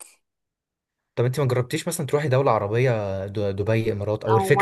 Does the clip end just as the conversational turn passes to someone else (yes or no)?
yes